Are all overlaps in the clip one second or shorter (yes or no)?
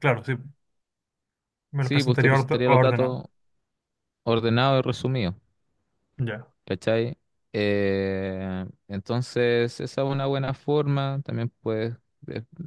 no